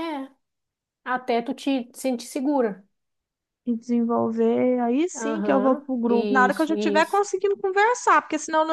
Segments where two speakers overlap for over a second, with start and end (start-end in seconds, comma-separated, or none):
5.2-7.2